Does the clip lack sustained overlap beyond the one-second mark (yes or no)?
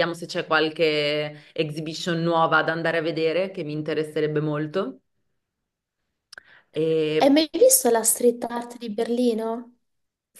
yes